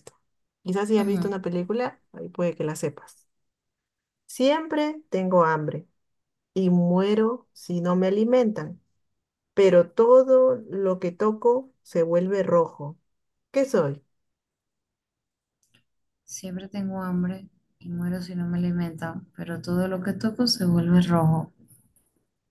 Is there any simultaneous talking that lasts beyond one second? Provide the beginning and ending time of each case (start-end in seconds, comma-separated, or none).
none